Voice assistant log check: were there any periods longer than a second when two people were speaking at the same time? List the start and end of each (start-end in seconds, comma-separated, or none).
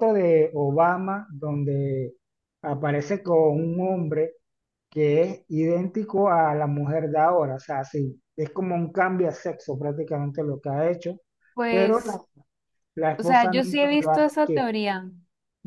13.2-14.7